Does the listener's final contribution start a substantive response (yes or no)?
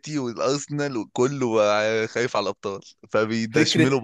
yes